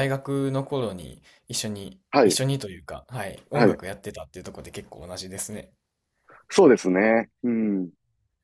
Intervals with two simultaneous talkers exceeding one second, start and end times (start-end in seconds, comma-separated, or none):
none